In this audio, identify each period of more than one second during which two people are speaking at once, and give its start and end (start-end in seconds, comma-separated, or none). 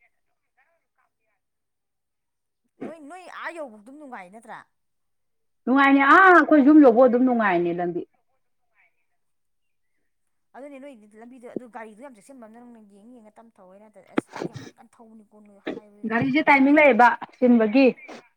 none